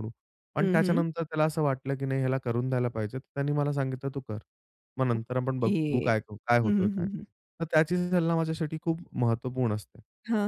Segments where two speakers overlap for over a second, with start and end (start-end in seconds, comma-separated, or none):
5.2-7.1